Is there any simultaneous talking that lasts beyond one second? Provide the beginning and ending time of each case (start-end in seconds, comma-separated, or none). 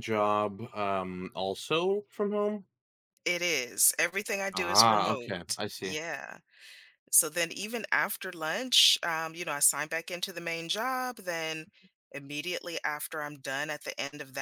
4.5-6.0